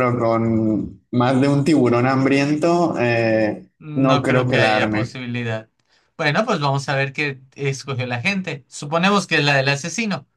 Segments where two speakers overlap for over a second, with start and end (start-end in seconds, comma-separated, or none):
3.8-5.2